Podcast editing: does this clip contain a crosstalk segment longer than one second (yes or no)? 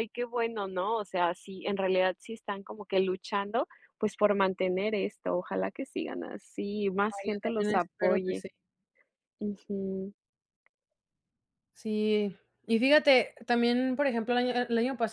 yes